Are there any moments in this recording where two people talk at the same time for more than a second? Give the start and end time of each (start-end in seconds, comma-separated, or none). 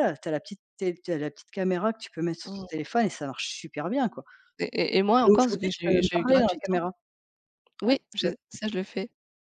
5.2-6.8